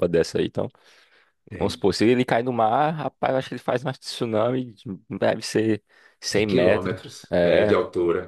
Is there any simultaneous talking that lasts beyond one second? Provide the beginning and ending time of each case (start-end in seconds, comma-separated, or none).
6.3-7.8